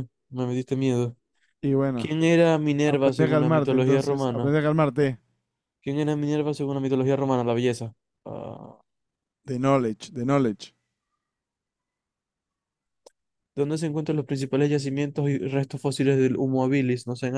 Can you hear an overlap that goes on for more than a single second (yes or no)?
yes